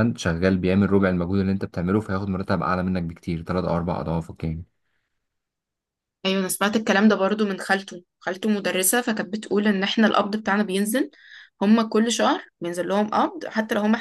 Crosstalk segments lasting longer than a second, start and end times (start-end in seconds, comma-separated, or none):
none